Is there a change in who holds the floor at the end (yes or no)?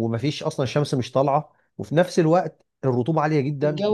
no